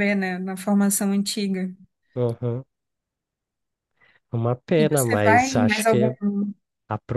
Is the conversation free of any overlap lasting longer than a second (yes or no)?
no